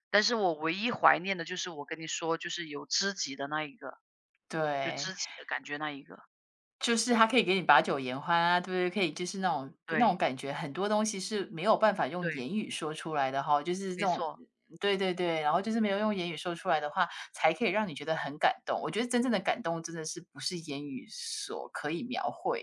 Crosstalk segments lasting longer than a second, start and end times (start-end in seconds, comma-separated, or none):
none